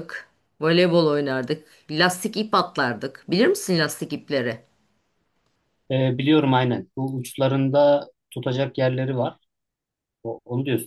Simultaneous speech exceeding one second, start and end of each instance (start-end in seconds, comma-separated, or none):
none